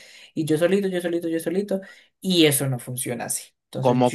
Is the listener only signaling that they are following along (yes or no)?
no